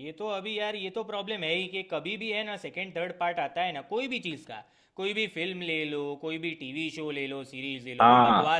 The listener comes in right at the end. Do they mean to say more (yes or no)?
no